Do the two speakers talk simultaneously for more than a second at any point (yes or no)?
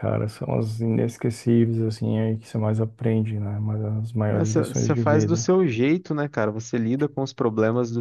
yes